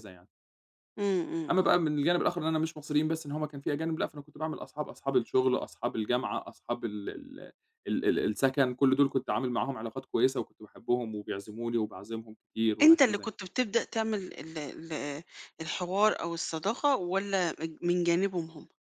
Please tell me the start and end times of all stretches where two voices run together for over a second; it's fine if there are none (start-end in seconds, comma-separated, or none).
none